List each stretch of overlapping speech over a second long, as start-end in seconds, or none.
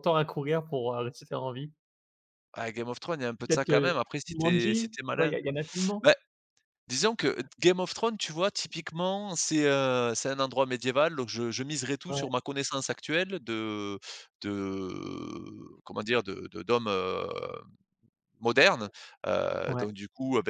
3.4-5.3